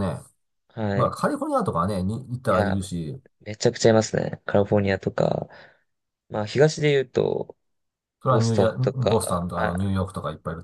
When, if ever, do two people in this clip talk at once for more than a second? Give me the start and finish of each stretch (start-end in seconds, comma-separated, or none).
8.2-9.8